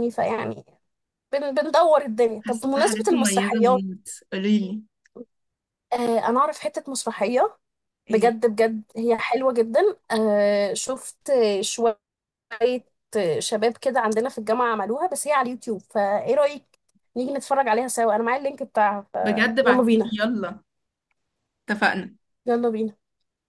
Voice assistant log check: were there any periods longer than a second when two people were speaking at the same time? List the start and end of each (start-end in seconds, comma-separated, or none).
2.4-3.8